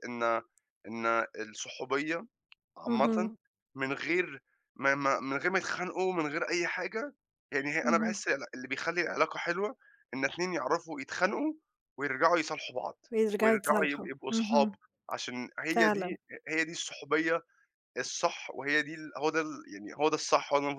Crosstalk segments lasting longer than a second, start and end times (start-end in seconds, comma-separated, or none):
13.3-14.7